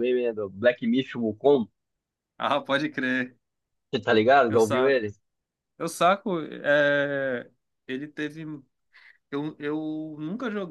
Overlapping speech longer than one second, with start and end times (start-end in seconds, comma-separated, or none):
none